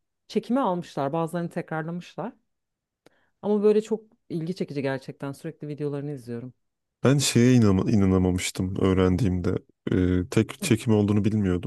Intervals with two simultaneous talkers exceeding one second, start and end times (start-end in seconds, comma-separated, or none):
none